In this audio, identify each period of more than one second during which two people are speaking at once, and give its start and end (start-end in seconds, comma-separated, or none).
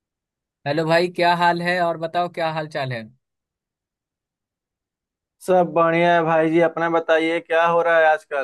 none